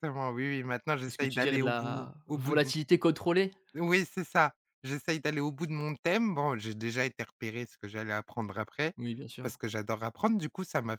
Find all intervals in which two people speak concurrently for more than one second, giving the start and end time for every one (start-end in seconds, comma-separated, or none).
1.1-2.7